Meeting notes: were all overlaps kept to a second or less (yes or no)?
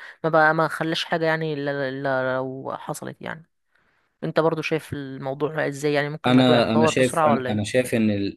no